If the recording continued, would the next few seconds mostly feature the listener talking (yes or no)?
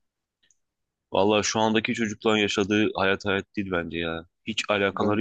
no